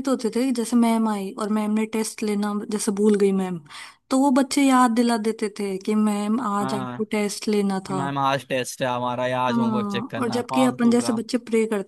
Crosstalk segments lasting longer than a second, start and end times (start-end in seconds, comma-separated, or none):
9.5-11.1